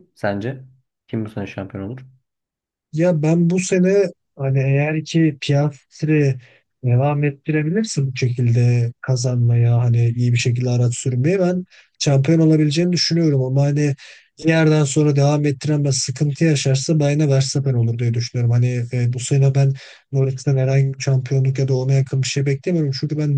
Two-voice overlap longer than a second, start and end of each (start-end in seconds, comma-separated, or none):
none